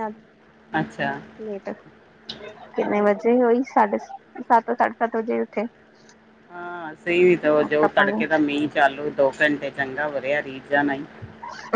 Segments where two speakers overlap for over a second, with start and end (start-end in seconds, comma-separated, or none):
none